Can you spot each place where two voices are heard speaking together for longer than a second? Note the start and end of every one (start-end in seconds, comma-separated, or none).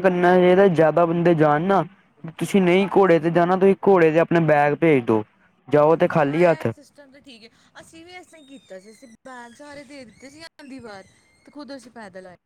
none